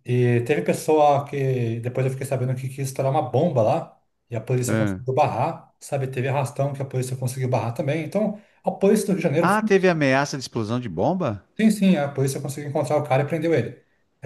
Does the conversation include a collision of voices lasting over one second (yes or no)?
no